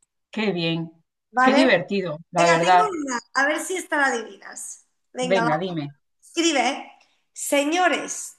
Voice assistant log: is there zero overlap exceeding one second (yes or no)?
yes